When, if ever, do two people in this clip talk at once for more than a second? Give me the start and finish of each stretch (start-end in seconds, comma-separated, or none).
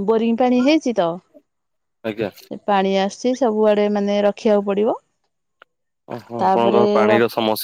none